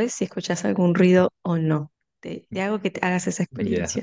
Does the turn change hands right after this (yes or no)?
yes